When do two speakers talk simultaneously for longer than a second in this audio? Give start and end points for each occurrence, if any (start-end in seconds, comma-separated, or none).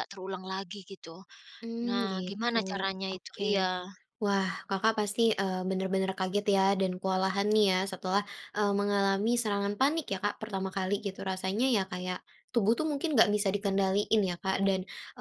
1.9-3.4